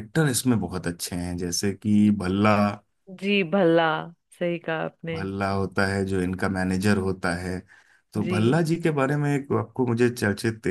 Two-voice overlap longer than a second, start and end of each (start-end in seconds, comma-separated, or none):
none